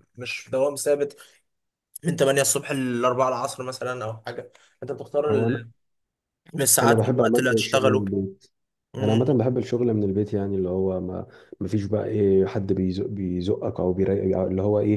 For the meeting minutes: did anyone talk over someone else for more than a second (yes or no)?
yes